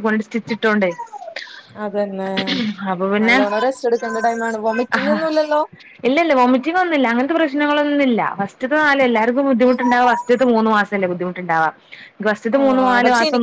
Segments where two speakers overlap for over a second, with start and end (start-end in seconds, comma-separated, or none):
none